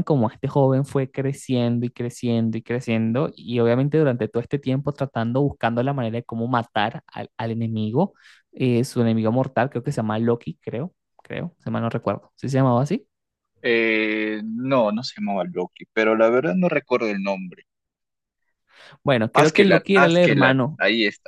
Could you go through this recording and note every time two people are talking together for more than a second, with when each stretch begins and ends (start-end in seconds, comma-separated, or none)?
19.3-20.8